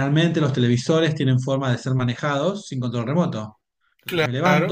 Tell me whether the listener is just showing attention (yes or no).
yes